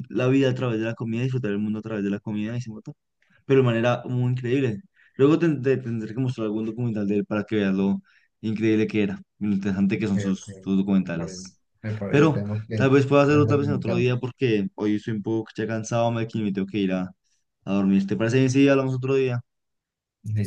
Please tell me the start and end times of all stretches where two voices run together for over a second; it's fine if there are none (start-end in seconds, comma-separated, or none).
12.1-14.1